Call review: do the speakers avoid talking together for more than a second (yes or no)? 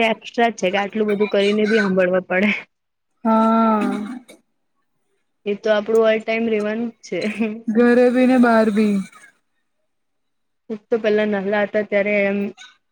yes